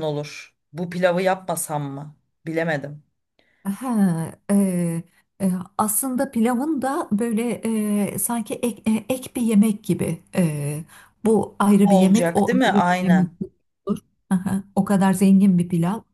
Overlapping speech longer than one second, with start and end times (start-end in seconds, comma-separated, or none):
11.8-13.3